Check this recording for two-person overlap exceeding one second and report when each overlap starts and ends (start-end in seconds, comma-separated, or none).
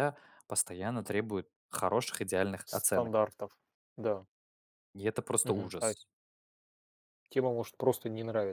none